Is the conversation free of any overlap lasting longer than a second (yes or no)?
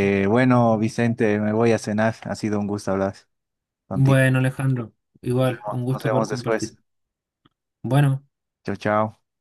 no